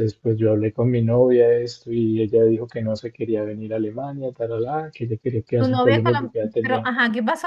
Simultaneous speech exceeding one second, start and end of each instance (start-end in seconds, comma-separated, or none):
5.6-6.9